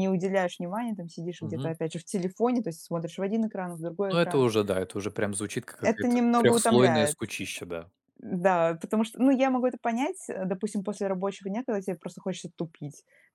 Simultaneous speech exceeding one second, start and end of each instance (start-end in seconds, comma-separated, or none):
5.8-7.2